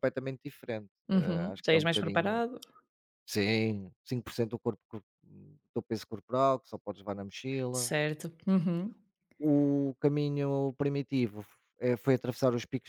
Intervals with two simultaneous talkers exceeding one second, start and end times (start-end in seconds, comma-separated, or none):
1.1-2.4